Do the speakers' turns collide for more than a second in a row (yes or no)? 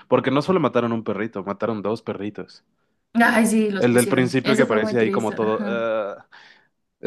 yes